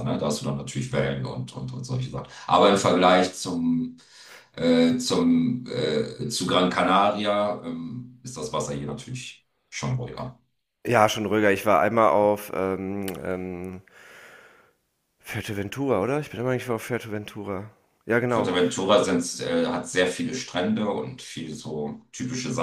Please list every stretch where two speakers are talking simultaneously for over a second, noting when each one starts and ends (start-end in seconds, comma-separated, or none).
none